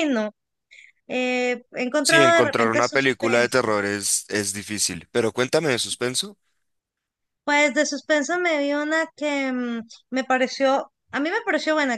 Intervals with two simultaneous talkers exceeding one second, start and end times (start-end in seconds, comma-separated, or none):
2.0-3.8